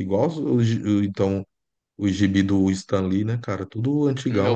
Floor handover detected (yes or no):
yes